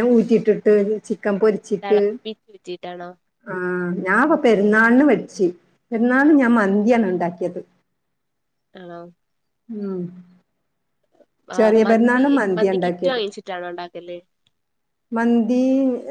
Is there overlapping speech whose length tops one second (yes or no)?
yes